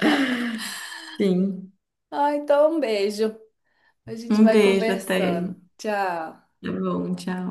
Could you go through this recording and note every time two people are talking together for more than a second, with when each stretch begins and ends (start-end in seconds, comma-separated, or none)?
4.3-5.5